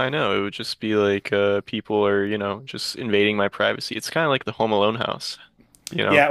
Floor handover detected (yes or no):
yes